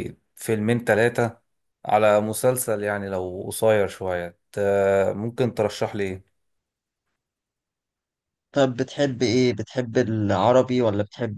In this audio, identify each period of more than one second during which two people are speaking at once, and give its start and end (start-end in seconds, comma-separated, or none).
none